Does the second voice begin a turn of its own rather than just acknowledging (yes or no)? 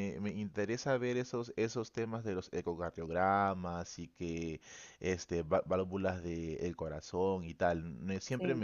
no